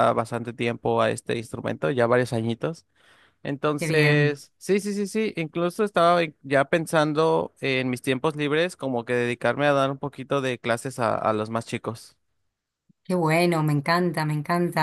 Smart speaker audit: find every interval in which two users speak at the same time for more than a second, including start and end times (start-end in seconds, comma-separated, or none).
none